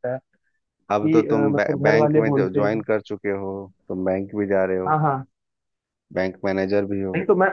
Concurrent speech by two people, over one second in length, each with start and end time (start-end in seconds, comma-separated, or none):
0.9-2.8